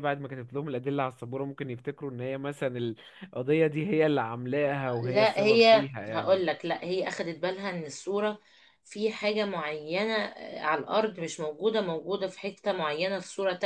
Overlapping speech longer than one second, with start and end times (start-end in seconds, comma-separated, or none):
5.0-6.4